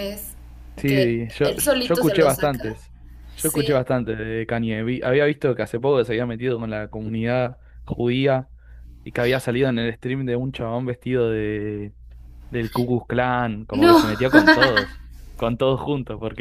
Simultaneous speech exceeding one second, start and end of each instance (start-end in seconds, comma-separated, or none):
0.9-2.6